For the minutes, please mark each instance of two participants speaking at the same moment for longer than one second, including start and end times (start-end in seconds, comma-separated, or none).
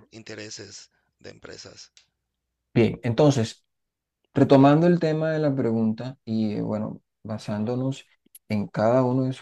none